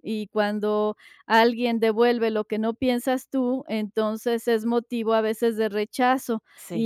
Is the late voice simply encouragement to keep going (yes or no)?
yes